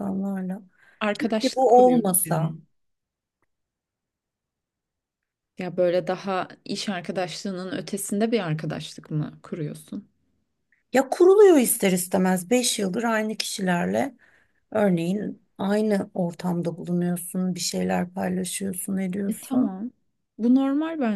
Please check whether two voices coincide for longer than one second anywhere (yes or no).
yes